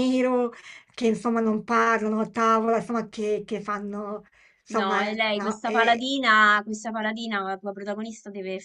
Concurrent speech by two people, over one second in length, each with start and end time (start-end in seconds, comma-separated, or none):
4.7-6.1